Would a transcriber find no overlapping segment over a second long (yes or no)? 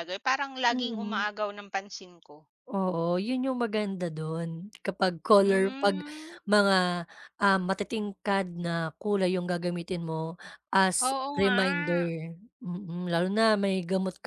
yes